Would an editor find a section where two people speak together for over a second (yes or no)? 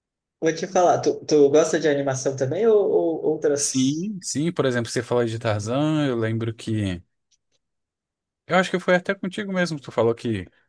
no